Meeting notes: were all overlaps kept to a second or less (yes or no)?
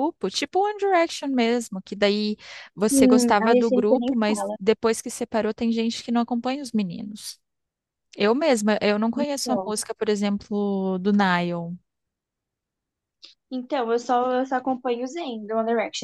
no